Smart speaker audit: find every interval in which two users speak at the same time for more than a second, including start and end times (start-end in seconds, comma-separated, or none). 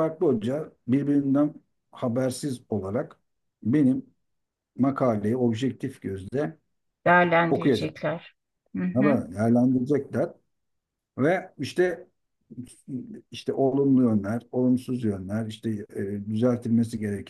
none